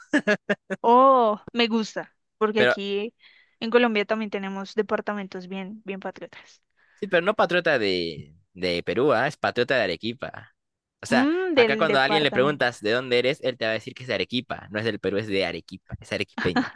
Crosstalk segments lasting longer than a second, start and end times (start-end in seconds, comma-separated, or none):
11.1-12.7